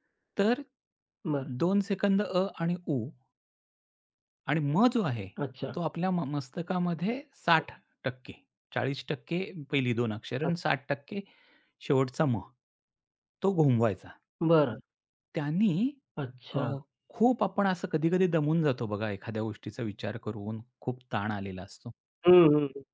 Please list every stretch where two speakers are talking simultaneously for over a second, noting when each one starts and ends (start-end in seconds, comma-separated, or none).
none